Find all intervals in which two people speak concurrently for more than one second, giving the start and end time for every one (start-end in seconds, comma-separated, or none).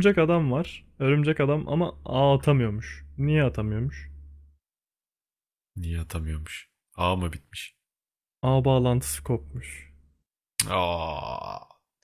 none